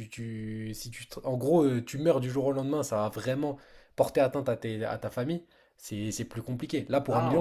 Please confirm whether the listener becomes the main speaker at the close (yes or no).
yes